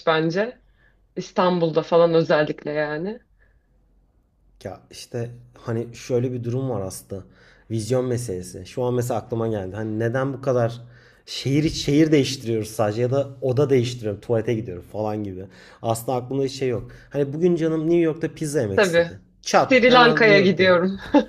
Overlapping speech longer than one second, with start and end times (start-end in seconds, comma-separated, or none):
18.8-20.8